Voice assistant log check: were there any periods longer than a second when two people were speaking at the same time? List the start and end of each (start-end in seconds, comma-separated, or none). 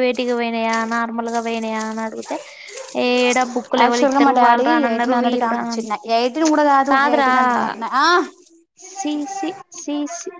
3.8-5.8